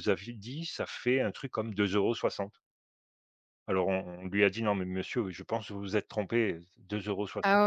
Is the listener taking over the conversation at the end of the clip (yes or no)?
no